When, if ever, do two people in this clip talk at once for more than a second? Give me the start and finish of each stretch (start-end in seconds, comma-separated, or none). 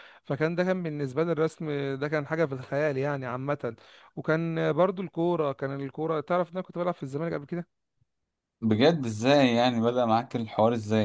none